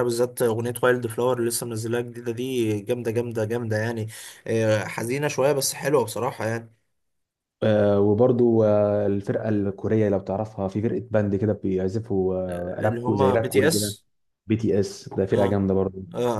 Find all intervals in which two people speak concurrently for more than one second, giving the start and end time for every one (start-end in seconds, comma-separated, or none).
12.5-13.9